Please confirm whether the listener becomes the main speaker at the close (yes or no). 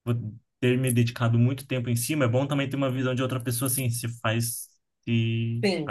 yes